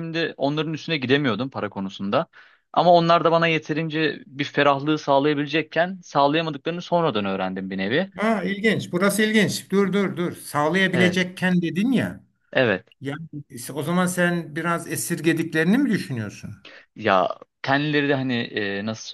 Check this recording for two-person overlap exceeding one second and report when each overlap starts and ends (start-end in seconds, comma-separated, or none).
none